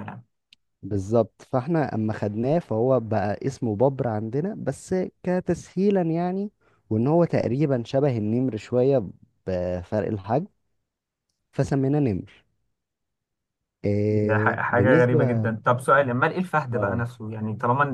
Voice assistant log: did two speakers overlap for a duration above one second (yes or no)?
yes